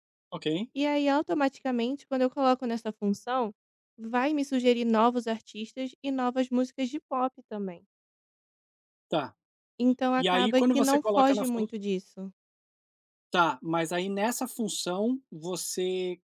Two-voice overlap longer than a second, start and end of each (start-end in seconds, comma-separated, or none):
10.2-11.7